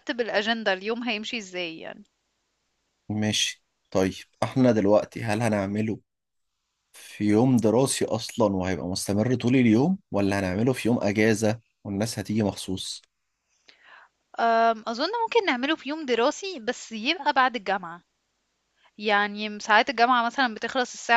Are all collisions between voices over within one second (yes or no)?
yes